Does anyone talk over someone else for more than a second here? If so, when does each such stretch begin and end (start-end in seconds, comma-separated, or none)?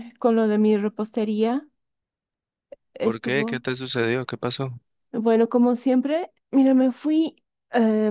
none